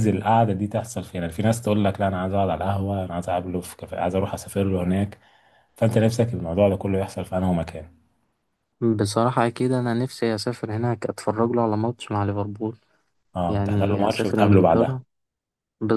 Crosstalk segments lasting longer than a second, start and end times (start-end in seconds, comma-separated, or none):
13.5-15.0